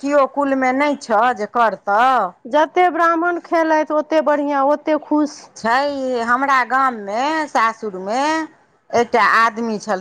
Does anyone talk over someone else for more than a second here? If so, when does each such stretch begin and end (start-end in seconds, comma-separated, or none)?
none